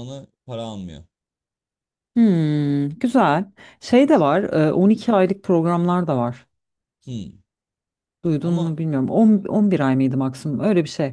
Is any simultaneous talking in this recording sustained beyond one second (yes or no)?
no